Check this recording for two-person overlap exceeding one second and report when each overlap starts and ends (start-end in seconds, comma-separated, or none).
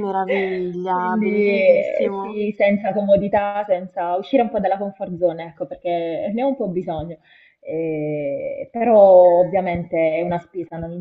0.9-2.4